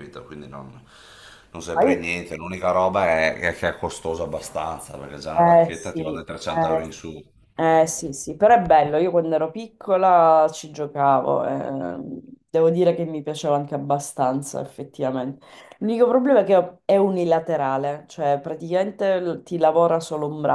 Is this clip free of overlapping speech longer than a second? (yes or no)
no